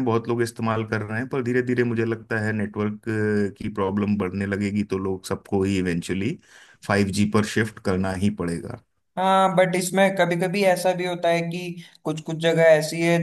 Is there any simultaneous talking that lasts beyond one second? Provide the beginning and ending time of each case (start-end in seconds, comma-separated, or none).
none